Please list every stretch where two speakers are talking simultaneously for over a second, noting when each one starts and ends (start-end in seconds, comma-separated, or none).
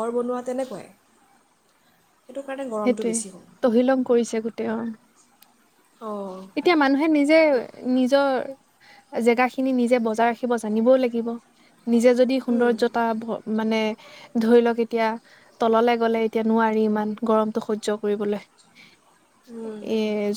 none